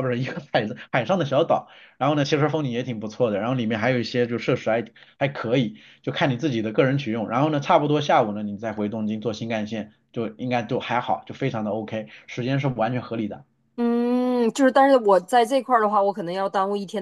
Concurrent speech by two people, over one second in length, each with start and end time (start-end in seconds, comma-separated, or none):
none